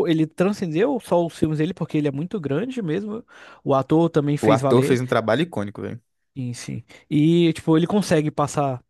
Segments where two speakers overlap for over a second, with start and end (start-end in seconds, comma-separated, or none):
none